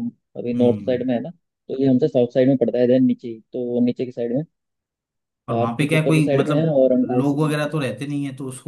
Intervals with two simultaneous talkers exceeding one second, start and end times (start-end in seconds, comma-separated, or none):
5.6-7.7